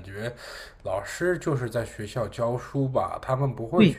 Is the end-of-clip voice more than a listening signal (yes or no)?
yes